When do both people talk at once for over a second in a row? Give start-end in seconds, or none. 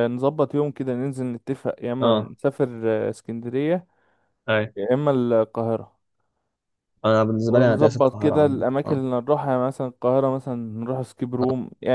7.5-9.0